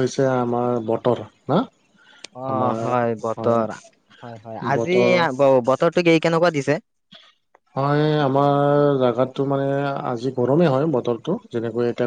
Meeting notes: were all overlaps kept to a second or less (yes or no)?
yes